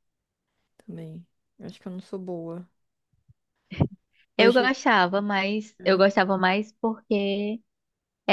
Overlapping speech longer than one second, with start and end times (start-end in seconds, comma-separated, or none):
none